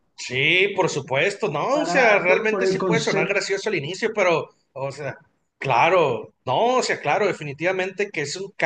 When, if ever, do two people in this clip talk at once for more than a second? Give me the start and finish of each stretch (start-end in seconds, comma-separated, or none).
1.7-3.4